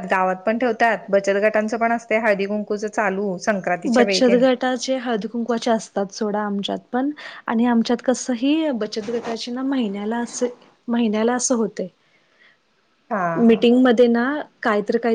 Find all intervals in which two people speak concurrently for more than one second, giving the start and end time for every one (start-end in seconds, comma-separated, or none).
none